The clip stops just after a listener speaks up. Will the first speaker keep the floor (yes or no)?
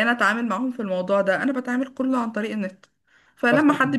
yes